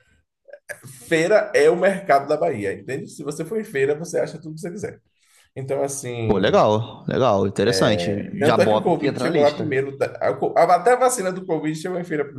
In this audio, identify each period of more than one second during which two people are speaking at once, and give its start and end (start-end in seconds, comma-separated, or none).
8.4-9.8